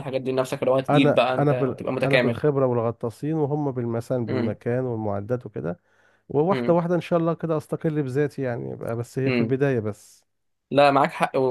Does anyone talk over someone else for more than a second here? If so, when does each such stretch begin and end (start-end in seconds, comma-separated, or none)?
0.9-2.4